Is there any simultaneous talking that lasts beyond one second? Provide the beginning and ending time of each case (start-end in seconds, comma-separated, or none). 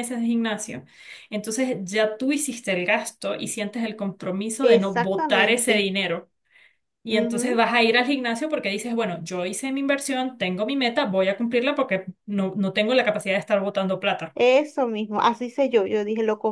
4.6-5.9